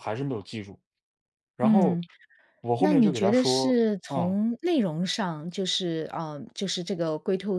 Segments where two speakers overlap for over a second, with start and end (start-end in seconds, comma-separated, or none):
2.8-4.3